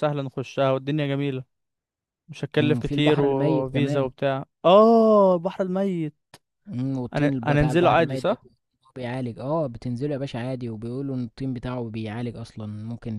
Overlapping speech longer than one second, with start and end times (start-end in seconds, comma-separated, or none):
2.6-4.1, 7.1-8.4